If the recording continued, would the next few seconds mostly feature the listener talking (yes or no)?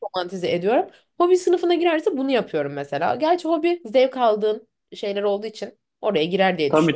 yes